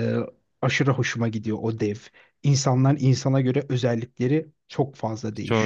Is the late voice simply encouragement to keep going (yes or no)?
no